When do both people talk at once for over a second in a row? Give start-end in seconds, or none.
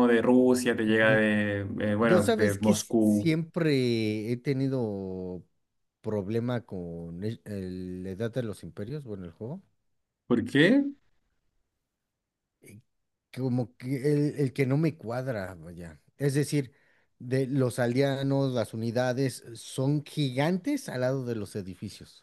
2.0-3.3